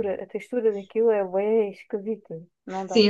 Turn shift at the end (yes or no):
yes